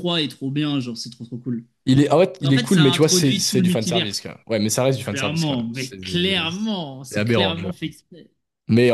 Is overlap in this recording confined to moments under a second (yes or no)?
no